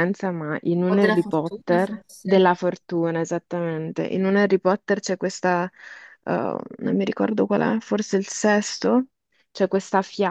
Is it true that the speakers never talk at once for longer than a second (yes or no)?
no